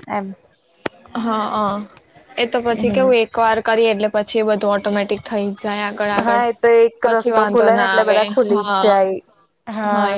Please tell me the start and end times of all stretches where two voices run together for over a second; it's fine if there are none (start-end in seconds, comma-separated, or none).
7.0-8.9